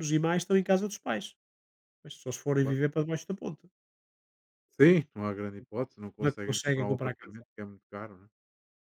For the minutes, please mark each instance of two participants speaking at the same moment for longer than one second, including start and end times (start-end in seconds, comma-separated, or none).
6.2-7.4